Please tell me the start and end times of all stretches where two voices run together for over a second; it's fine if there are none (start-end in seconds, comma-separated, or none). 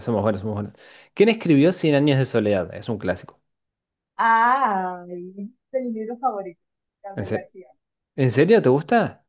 none